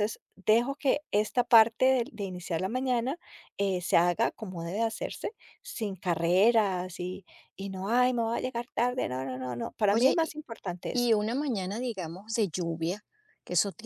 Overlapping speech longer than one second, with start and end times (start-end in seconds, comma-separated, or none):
none